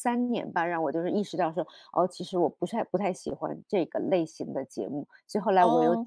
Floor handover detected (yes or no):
yes